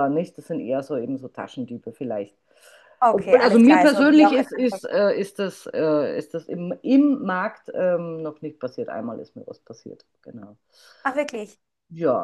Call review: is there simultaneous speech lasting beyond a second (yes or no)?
yes